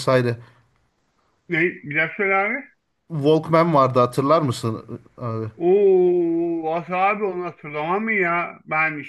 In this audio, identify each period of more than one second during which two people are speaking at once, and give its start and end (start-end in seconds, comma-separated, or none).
none